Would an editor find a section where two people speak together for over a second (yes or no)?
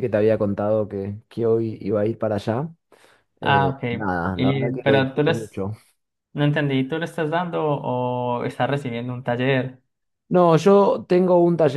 yes